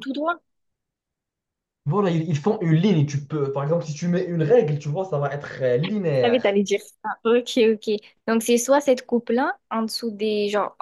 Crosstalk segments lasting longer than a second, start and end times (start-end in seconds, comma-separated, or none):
none